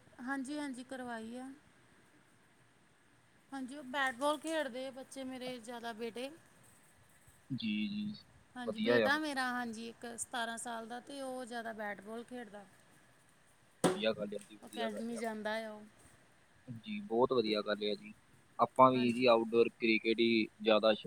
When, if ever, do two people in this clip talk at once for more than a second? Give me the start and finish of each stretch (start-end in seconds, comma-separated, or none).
none